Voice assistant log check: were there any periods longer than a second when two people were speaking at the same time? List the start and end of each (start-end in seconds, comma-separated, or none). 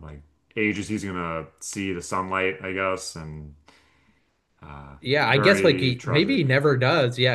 5.0-6.4